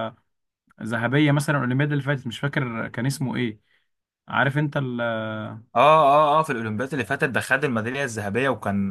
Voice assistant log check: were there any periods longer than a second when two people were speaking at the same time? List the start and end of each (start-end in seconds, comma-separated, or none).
none